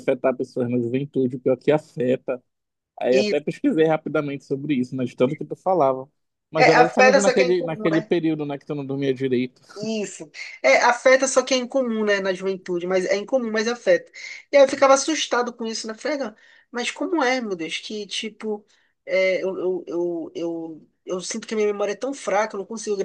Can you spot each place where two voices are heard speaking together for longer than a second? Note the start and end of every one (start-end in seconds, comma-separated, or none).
6.6-8.1